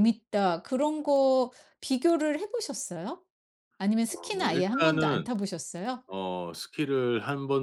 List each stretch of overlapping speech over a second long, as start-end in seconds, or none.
4.1-5.3